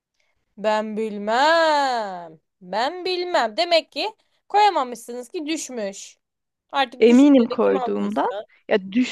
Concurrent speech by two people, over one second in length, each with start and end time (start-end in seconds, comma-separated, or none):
7.0-8.3